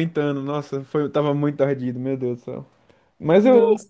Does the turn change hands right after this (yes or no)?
no